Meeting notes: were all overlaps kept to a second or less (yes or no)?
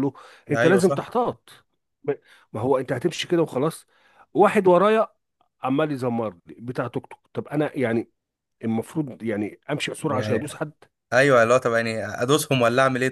yes